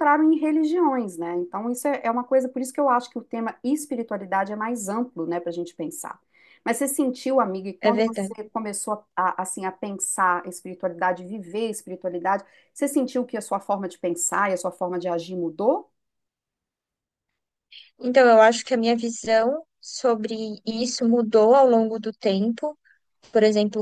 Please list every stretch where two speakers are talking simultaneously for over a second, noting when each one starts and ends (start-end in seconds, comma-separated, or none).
none